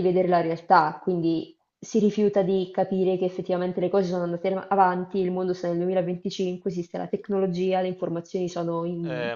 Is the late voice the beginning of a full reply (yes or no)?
yes